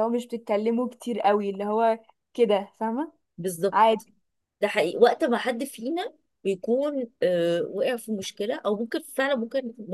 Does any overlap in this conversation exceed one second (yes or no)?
no